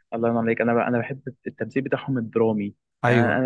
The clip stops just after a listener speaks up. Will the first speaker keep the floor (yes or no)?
yes